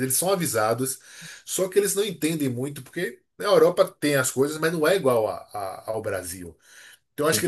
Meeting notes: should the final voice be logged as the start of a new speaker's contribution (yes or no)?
no